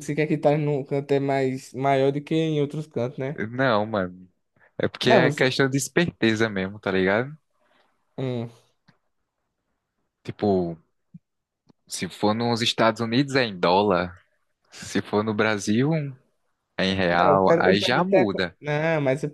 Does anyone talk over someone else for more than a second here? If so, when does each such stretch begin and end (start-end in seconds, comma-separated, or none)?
17.2-18.6